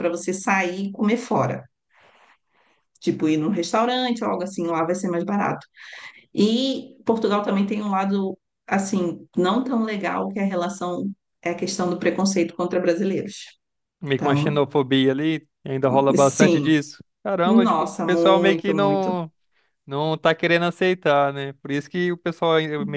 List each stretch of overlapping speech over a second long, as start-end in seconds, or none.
17.4-19.2